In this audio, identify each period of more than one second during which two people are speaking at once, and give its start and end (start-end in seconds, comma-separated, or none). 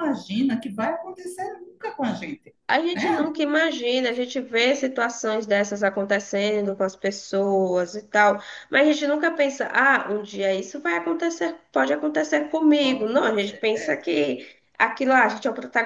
12.8-14.0